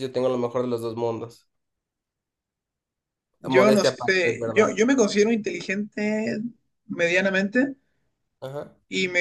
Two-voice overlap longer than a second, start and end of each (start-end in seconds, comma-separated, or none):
3.5-4.8